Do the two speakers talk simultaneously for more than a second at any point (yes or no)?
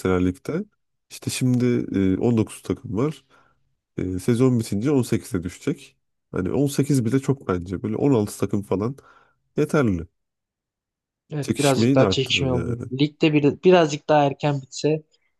yes